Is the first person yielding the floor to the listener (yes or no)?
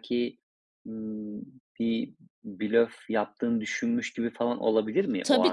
yes